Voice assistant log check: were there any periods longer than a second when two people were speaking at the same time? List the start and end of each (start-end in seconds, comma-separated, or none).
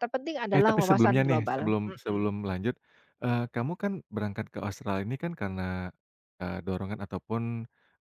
0.5-2.3